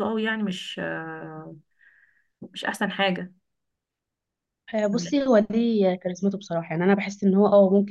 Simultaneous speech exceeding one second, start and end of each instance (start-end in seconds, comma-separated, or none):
none